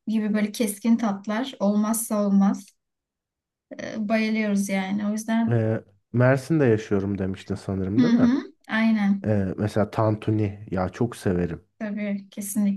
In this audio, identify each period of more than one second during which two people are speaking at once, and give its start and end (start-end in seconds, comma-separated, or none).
none